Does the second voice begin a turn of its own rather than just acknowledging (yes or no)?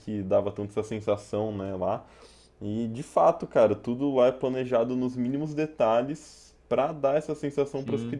no